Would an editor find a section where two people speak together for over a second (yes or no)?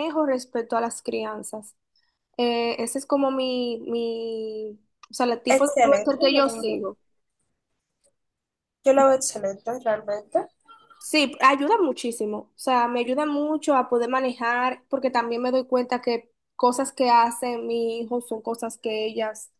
yes